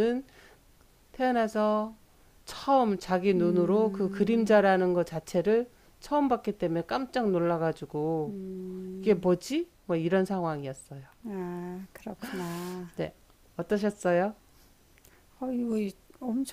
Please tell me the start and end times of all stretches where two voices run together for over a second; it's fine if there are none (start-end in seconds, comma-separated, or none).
3.4-4.6